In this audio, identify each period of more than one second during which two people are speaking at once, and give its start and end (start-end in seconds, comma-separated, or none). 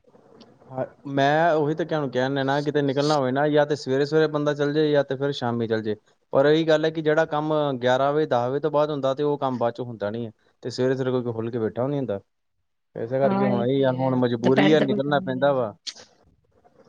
13.2-15.7